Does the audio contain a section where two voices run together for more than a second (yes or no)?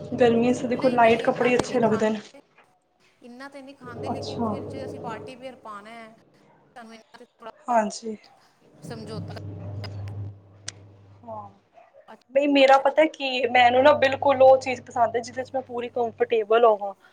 yes